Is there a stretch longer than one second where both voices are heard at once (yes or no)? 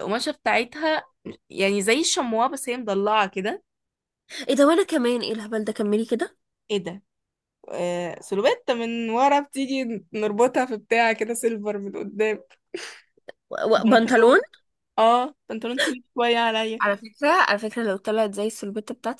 no